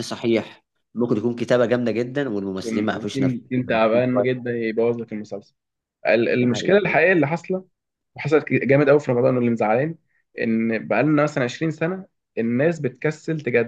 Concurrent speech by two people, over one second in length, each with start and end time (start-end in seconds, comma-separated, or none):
2.6-4.4